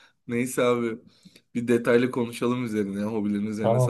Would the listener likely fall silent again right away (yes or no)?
yes